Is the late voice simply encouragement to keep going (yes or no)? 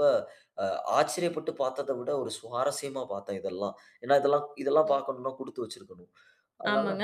no